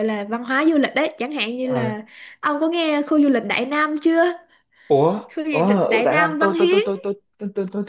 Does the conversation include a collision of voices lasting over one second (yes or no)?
yes